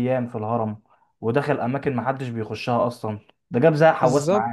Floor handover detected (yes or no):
yes